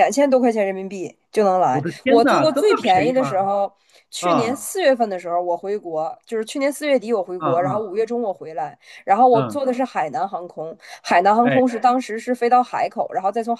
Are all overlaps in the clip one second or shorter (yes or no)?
no